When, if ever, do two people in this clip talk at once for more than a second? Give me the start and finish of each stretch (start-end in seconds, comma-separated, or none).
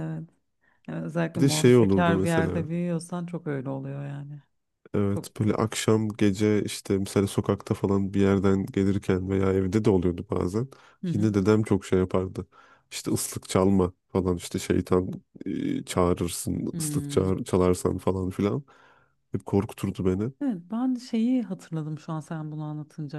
1.4-2.7